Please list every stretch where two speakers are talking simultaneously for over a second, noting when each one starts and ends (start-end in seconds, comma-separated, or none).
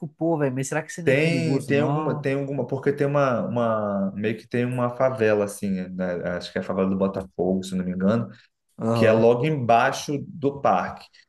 1.0-2.2